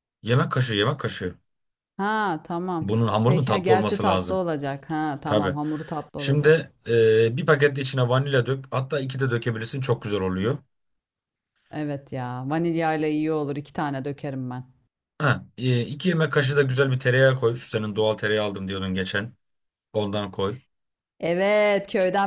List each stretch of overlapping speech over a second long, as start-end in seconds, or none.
2.8-4.4